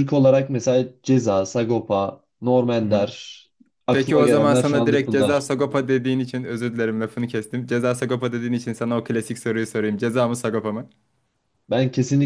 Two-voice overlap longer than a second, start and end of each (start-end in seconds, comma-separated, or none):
3.9-5.5